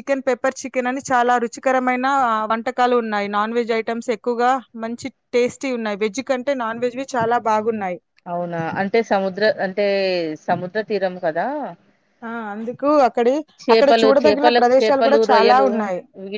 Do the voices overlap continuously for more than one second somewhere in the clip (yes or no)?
yes